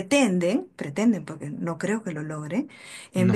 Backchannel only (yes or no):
yes